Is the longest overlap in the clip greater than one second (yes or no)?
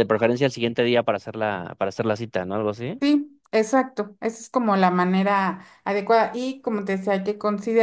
no